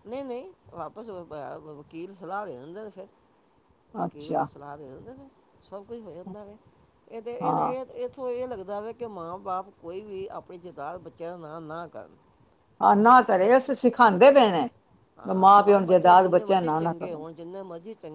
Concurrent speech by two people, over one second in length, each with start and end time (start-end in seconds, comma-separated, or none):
15.3-17.2